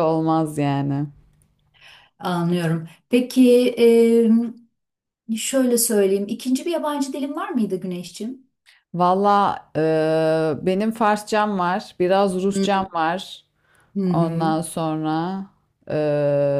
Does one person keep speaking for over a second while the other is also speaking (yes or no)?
no